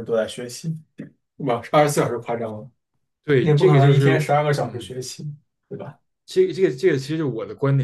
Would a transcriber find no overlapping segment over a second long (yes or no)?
no